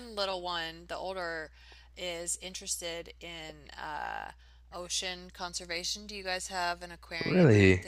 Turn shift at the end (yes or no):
yes